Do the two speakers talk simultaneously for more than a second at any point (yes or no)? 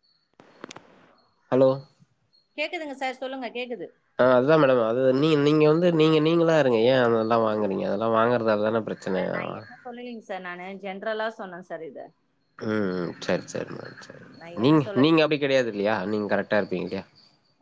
no